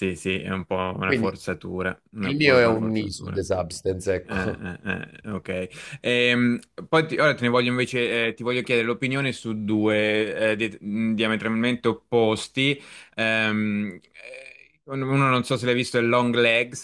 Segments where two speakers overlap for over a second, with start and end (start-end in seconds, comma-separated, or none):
2.2-3.4